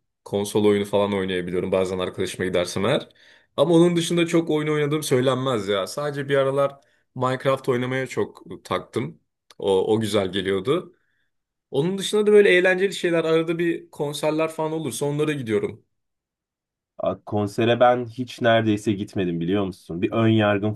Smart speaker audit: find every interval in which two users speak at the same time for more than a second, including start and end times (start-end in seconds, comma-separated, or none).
none